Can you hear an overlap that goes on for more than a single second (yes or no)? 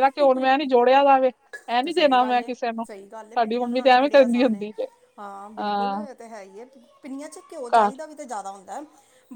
no